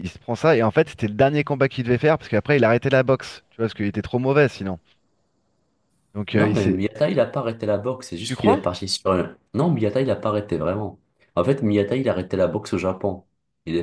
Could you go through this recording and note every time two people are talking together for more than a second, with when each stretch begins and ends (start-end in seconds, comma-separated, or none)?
none